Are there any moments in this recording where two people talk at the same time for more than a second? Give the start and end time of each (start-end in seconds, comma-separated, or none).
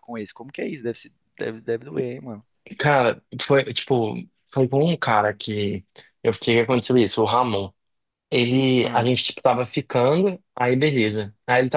none